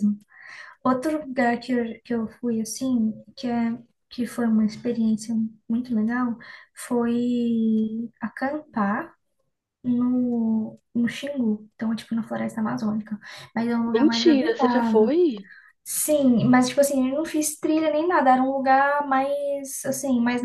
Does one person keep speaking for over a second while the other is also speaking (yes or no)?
yes